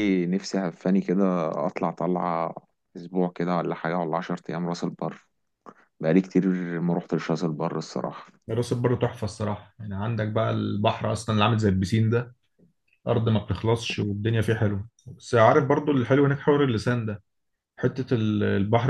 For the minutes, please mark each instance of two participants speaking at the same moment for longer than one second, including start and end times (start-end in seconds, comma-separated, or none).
none